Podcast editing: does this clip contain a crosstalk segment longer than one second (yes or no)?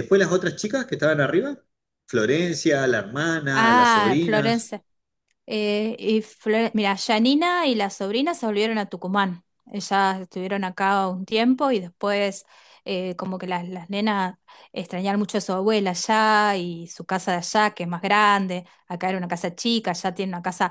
yes